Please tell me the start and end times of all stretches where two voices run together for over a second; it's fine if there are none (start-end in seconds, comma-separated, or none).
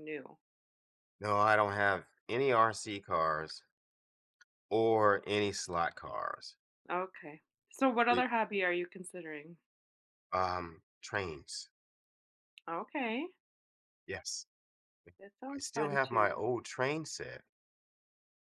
15.2-16.4